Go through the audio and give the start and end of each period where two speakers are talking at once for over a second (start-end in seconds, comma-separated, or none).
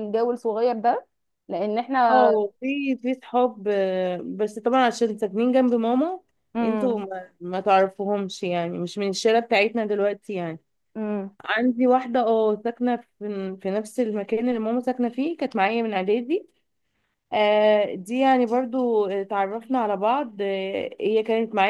none